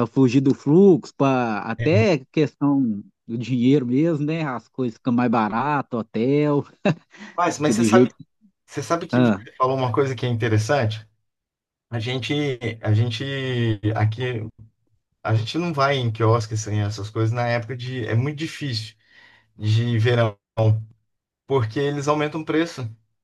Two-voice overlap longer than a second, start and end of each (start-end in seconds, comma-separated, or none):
none